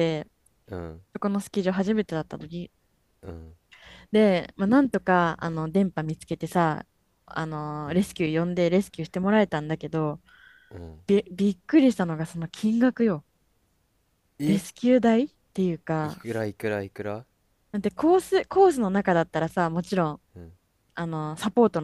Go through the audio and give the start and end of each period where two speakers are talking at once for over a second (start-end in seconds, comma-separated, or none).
none